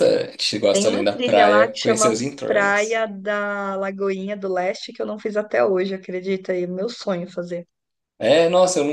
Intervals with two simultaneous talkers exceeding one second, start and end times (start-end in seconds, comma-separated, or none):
0.7-3.0